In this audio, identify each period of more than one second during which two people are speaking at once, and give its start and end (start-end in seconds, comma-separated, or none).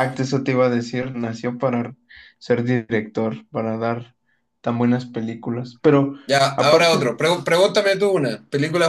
none